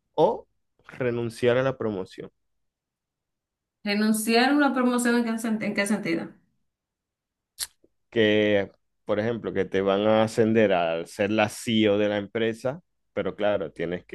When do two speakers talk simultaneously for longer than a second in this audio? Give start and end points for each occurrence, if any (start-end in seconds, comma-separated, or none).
none